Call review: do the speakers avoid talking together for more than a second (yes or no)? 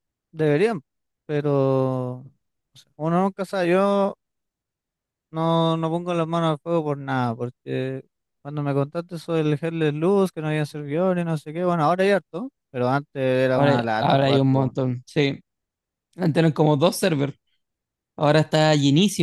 no